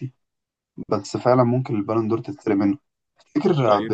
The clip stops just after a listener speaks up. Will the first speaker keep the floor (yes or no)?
yes